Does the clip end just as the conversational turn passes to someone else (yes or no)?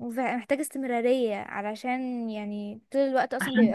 yes